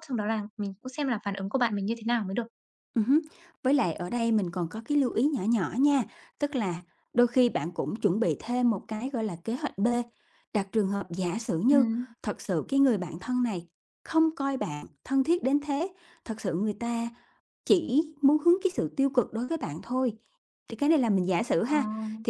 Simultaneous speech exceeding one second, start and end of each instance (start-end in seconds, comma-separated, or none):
none